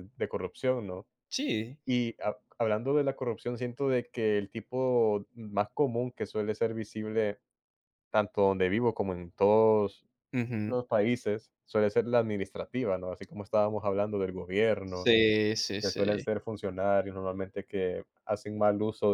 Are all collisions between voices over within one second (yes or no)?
yes